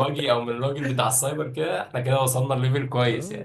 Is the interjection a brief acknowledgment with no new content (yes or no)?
no